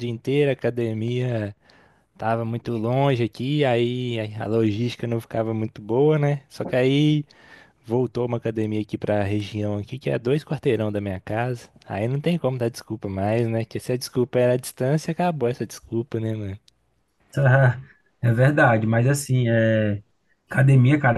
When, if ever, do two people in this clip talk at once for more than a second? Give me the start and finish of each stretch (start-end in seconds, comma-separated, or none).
none